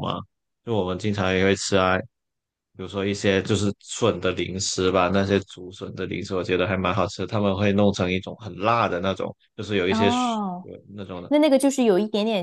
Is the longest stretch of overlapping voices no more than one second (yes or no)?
yes